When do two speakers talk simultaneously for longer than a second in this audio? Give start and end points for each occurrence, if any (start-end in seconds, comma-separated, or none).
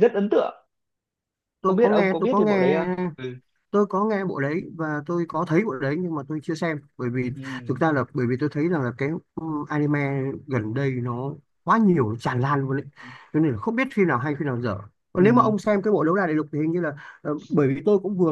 1.6-2.9